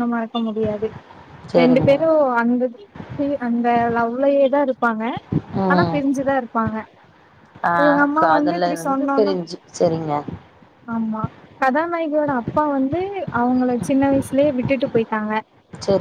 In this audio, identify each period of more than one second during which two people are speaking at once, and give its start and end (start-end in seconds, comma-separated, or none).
none